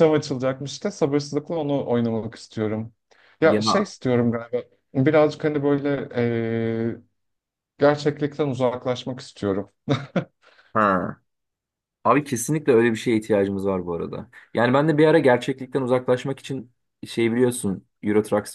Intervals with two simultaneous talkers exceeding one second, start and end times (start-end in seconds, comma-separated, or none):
none